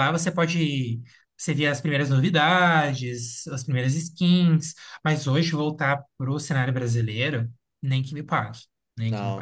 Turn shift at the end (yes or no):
yes